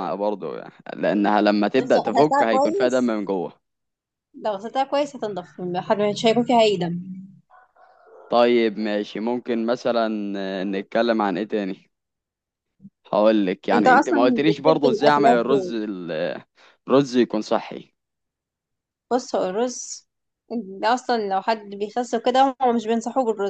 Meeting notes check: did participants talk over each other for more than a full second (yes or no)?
yes